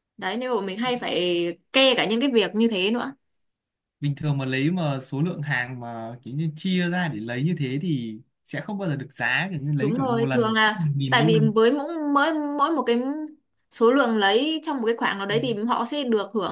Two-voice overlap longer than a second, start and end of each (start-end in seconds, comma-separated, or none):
9.8-11.5